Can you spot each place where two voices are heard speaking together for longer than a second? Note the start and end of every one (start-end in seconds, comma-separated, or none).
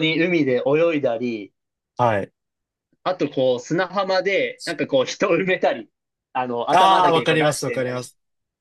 6.7-8.0